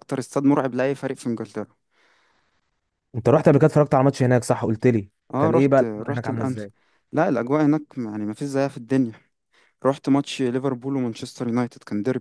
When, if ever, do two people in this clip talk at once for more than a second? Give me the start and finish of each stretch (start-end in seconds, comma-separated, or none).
5.3-6.7